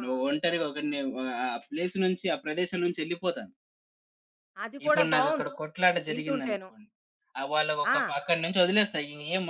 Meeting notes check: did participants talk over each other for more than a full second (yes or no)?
yes